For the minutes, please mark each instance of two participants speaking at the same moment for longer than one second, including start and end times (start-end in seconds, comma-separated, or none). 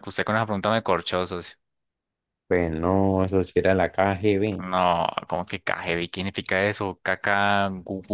none